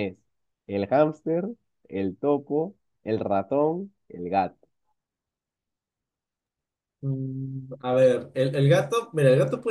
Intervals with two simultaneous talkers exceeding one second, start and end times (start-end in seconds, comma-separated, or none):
none